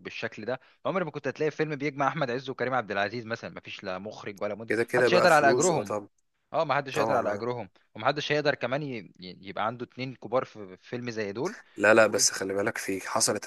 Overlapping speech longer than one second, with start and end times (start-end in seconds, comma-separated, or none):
4.7-5.9